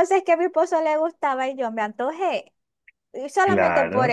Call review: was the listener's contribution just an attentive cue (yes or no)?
yes